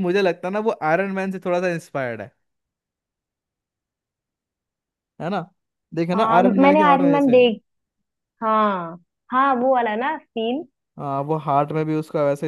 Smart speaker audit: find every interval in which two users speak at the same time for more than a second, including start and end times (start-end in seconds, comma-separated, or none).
6.2-7.4